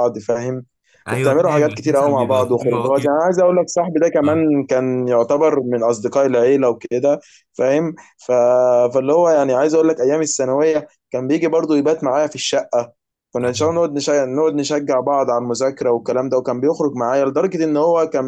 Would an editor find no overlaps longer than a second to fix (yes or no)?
no